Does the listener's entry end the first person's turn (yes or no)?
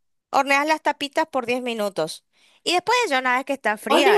yes